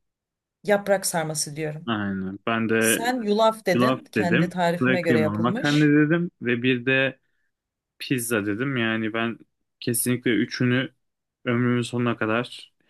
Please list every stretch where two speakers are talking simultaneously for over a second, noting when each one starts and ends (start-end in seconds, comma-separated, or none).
3.7-5.9